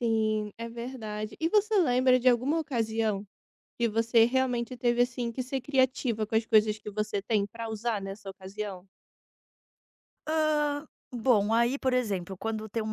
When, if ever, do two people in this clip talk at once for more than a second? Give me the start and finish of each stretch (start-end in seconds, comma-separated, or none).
none